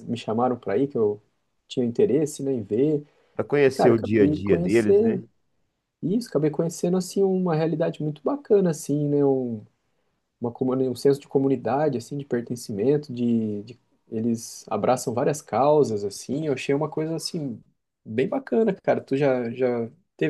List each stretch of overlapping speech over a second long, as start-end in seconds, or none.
3.7-5.2